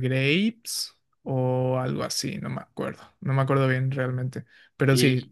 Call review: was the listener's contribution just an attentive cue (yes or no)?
yes